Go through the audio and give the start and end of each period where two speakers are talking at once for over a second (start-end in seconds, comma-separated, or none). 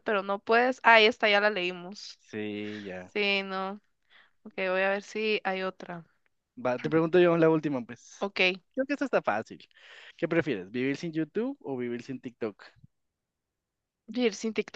none